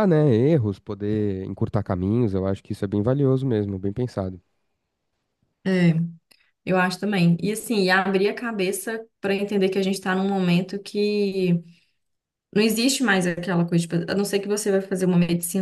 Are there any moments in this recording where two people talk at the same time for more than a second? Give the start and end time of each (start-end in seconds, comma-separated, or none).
none